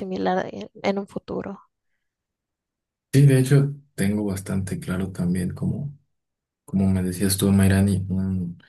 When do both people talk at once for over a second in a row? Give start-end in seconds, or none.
none